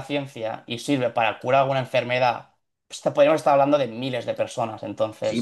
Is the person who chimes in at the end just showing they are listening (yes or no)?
no